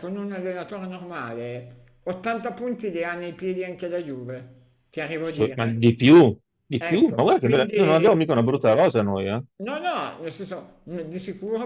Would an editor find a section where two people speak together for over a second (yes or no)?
yes